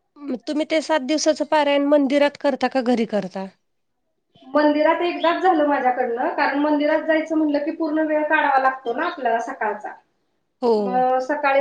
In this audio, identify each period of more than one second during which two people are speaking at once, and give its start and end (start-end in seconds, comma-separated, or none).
none